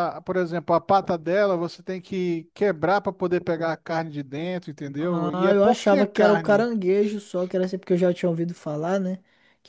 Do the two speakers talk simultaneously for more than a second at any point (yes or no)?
yes